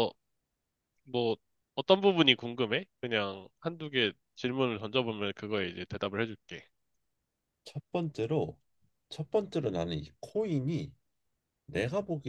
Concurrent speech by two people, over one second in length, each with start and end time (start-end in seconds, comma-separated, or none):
none